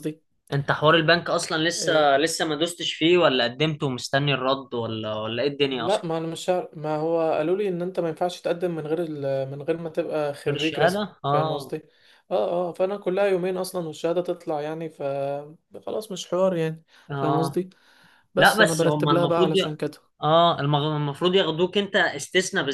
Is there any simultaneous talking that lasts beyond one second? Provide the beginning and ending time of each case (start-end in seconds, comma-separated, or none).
10.5-11.8, 18.4-19.8